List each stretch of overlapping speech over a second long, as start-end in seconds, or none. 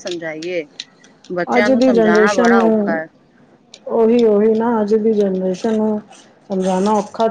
1.6-3.0